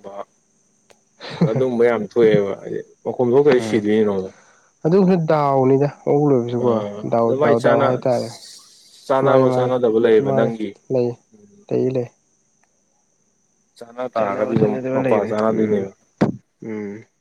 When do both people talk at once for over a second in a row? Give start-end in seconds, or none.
14.2-15.8